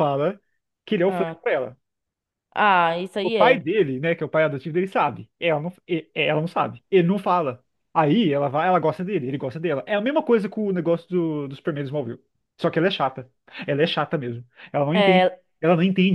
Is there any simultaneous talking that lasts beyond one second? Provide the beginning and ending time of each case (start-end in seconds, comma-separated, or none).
none